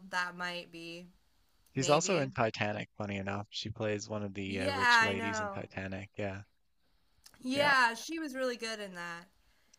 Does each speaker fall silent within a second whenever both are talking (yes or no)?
no